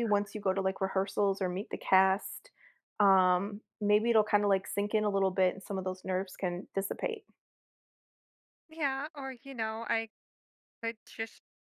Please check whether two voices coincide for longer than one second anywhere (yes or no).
no